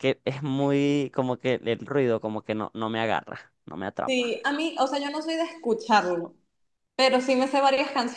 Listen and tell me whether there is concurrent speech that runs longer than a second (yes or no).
no